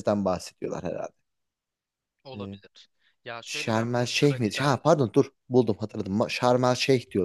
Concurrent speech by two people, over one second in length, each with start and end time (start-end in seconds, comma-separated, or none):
3.5-4.8